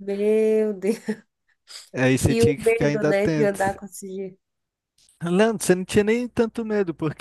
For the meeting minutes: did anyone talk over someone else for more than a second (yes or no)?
yes